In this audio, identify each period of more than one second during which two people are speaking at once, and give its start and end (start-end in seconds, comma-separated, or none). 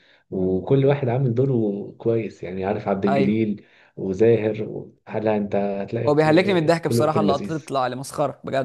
6.1-7.7